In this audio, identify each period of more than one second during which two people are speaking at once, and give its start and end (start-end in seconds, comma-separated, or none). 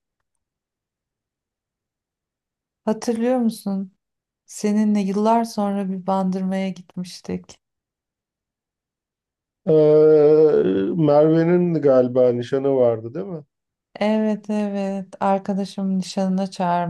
none